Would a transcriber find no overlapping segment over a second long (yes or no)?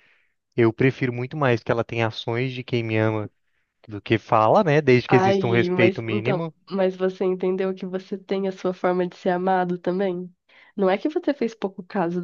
no